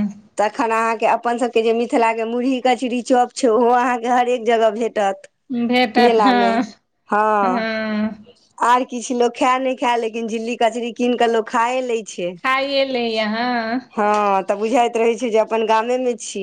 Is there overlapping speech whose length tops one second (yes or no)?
no